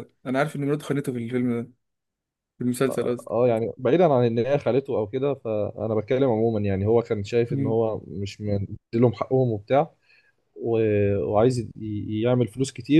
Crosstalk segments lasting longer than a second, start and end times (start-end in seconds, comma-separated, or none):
none